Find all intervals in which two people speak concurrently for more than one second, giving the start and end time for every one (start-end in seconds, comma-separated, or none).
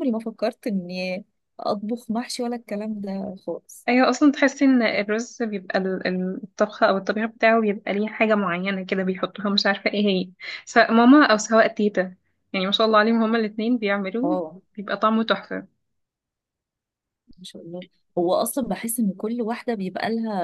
none